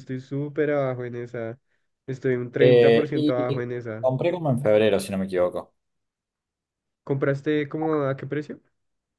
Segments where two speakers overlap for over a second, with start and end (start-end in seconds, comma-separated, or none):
2.6-4.1